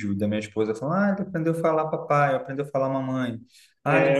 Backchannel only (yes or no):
yes